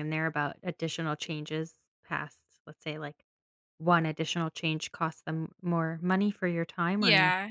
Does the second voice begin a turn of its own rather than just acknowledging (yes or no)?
yes